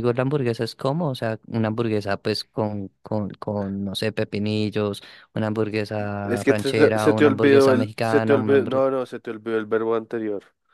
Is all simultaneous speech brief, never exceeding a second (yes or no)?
no